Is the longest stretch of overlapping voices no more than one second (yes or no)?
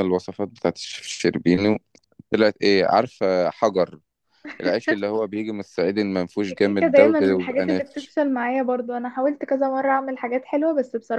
no